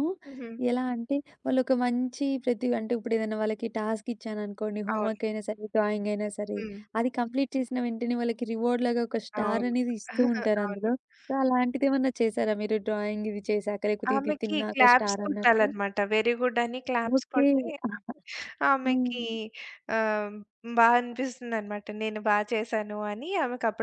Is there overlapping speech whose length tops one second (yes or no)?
yes